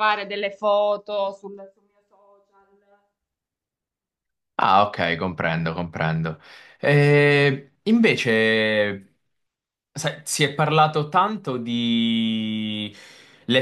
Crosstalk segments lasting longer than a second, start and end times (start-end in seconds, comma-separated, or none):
none